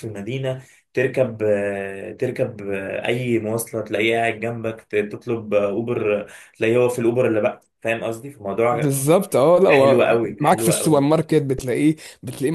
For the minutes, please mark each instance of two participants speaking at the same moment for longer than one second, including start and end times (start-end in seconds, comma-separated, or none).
9.7-11.0